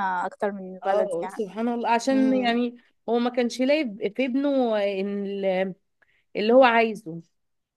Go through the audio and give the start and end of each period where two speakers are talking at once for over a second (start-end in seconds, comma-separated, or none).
none